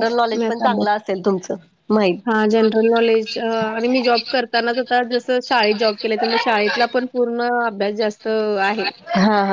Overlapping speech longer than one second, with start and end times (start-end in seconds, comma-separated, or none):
none